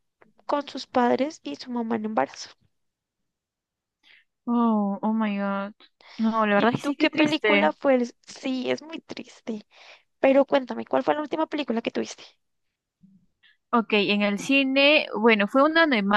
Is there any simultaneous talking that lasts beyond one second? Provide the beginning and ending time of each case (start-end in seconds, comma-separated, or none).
6.5-7.8